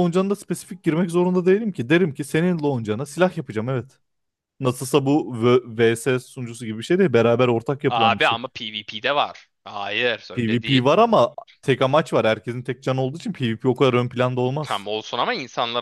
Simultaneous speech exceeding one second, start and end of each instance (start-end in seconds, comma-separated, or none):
none